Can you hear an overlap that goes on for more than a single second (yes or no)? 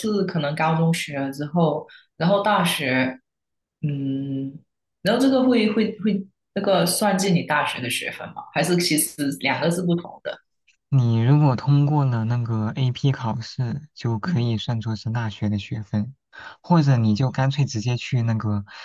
no